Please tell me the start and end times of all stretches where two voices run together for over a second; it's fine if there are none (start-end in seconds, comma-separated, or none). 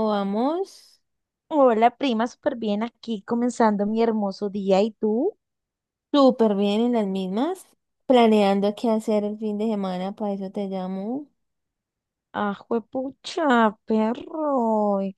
none